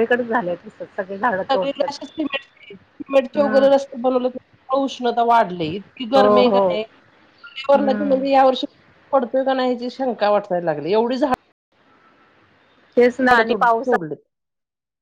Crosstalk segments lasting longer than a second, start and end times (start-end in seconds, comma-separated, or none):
none